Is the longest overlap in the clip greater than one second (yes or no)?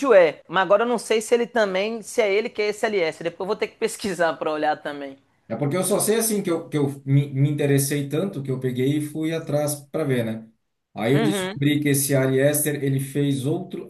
no